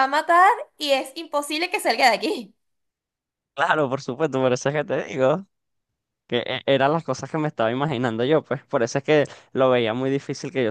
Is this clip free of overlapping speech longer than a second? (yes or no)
yes